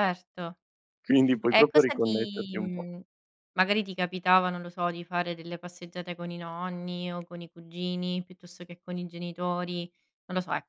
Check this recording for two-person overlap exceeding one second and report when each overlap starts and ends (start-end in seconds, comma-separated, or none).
1.5-2.9